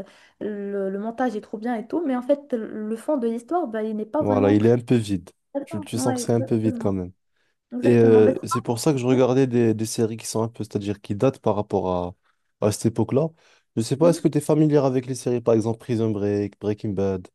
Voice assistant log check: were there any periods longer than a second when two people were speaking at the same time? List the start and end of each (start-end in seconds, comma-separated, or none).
5.7-7.0, 7.8-9.2